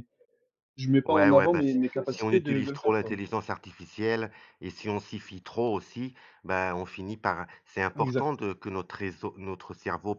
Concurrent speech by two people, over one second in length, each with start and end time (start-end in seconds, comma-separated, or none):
1.1-3.2